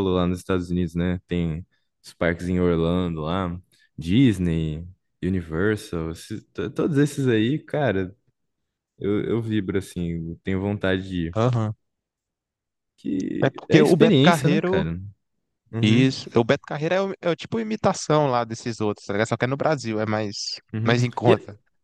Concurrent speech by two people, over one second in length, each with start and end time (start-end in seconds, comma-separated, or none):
13.4-14.9